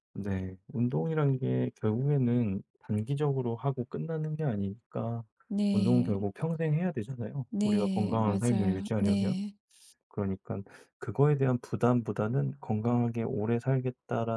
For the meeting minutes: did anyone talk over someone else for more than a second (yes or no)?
yes